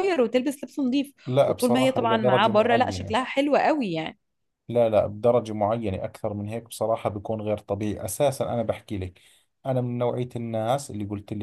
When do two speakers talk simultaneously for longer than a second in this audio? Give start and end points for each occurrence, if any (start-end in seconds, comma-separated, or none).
1.3-3.1